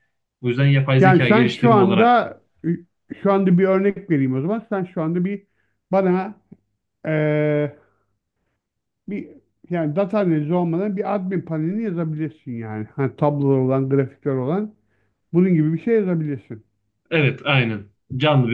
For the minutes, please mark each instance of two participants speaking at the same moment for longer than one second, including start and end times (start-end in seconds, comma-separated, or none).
1.0-2.4